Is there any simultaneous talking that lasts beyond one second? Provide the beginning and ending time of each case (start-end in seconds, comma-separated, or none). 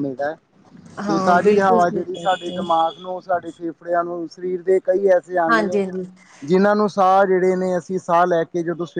1.1-2.6